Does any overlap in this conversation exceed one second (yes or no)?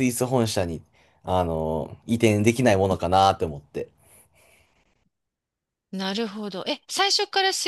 no